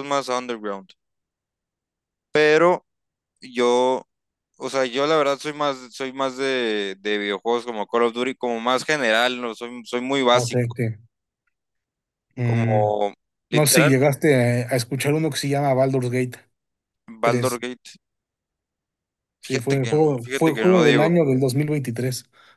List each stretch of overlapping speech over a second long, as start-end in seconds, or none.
19.4-21.2